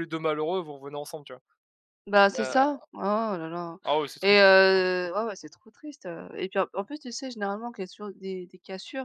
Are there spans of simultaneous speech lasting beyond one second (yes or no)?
no